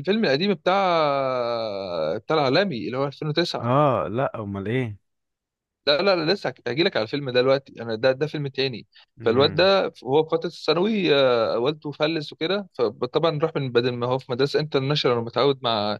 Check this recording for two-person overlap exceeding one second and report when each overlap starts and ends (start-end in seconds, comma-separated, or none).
none